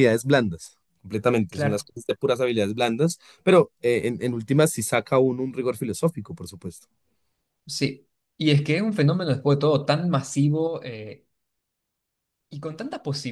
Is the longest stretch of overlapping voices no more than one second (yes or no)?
yes